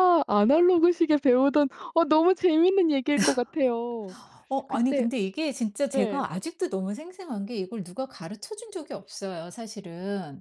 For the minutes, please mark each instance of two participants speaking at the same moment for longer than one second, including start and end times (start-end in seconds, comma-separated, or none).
none